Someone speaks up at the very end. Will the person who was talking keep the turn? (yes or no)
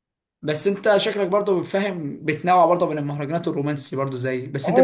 no